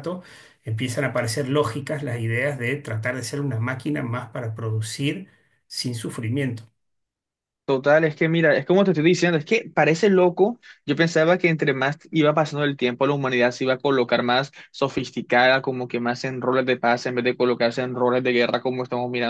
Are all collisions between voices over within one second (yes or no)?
yes